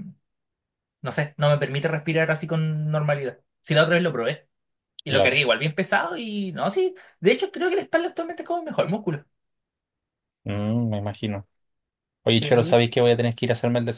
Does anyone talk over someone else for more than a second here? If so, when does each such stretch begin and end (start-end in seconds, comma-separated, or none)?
none